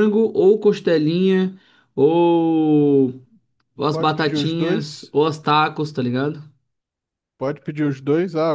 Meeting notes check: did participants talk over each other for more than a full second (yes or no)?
yes